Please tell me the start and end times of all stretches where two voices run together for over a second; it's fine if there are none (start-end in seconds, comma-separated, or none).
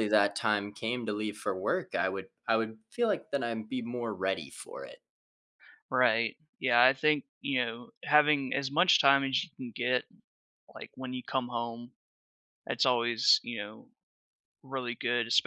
none